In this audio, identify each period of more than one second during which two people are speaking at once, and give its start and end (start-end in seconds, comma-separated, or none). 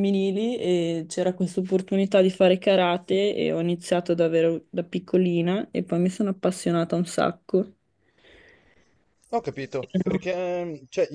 none